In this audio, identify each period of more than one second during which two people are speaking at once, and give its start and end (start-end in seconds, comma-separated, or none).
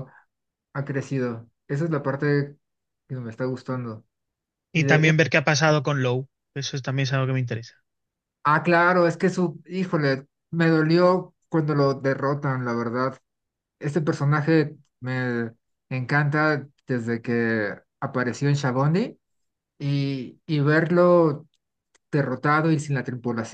none